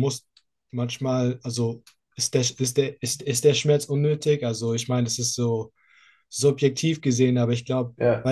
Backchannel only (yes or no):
yes